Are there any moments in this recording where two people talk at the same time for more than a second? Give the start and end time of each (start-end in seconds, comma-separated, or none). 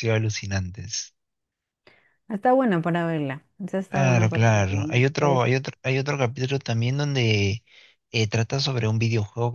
3.9-5.5